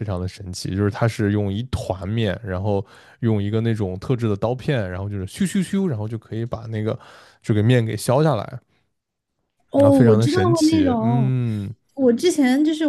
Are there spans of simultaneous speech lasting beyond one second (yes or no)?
yes